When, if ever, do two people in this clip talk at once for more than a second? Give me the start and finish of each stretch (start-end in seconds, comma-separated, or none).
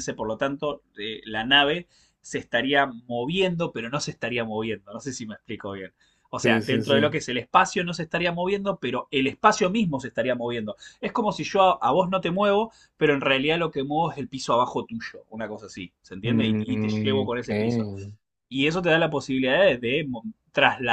16.2-17.5